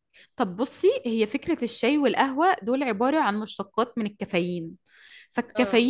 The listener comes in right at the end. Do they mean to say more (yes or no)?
no